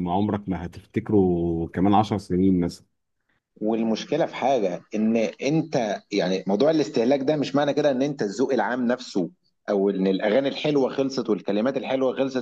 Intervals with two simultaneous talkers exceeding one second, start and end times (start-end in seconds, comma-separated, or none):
none